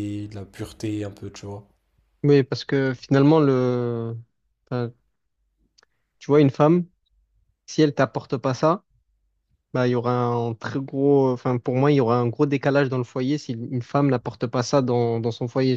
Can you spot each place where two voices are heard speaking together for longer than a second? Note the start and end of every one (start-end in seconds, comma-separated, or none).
none